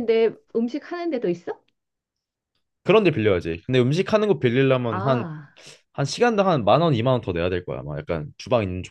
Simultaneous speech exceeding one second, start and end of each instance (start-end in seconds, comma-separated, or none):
none